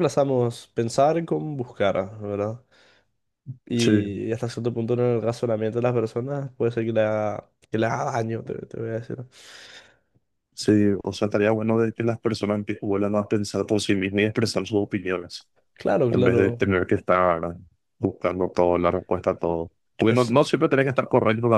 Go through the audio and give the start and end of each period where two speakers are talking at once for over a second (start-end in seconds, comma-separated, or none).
none